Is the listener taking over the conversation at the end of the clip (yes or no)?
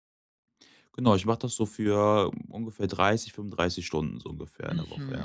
yes